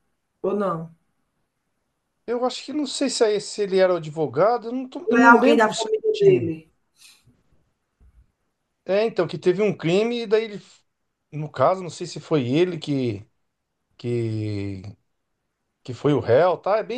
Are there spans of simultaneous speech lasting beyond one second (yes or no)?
yes